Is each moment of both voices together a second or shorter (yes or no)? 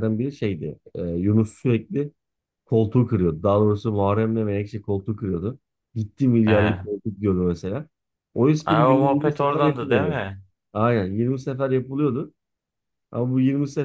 no